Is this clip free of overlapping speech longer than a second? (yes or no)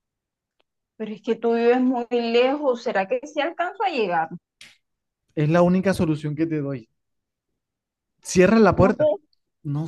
yes